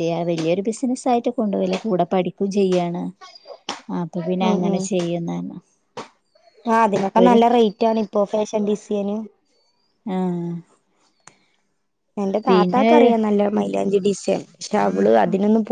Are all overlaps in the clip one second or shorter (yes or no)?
yes